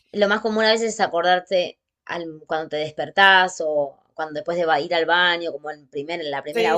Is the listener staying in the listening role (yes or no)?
no